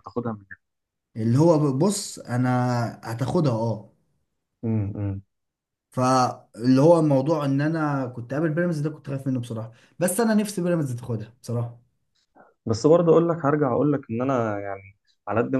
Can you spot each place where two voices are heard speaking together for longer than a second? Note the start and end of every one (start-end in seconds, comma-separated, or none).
none